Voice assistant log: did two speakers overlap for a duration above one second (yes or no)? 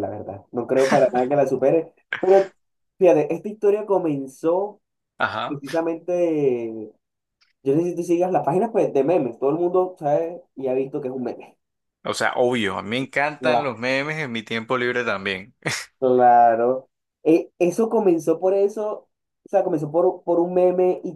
no